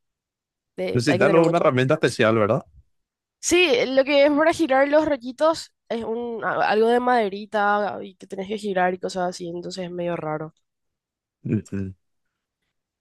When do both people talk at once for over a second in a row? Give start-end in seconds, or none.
0.9-2.1